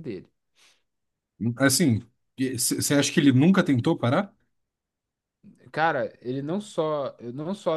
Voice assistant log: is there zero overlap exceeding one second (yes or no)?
yes